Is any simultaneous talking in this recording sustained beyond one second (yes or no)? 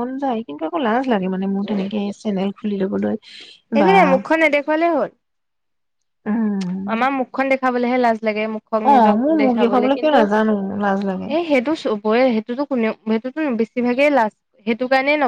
yes